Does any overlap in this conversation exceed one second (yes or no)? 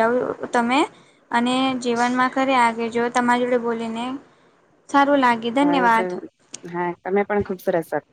no